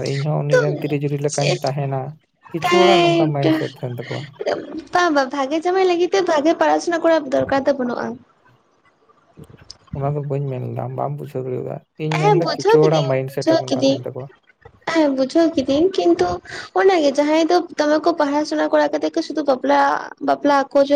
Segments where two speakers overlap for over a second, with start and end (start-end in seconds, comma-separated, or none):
12.2-13.9